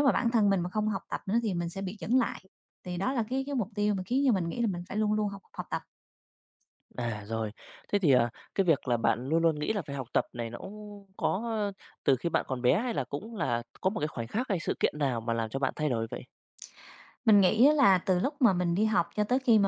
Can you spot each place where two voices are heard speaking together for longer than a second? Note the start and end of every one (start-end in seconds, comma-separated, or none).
none